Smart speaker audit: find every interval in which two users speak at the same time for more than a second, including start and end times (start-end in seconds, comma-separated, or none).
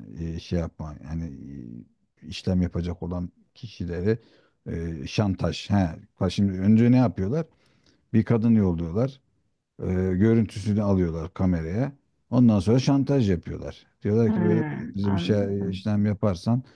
14.3-15.9